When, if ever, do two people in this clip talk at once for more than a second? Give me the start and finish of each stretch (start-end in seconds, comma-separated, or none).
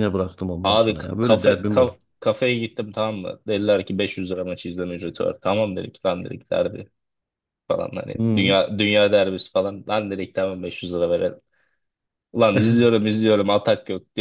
0.6-2.0